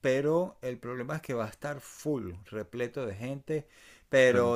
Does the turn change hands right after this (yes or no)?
no